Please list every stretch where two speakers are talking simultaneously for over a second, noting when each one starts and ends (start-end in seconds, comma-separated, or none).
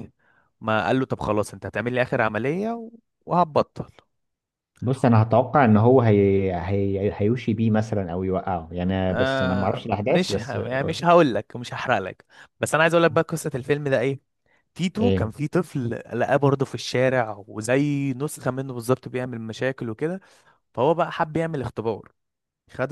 9.1-10.6